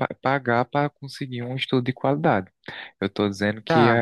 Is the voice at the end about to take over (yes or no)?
yes